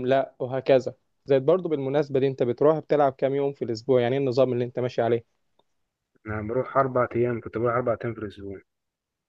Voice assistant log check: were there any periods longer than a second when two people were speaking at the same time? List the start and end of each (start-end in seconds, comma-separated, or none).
none